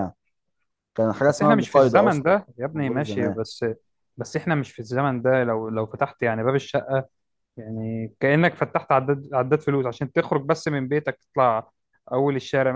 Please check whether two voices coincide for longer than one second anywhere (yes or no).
yes